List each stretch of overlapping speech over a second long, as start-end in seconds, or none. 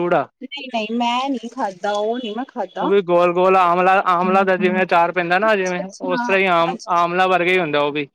5.5-6.9